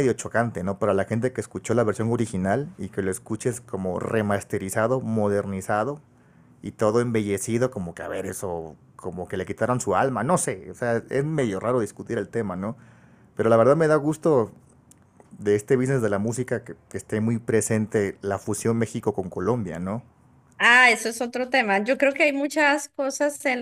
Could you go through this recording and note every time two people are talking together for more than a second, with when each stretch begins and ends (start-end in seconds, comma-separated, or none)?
none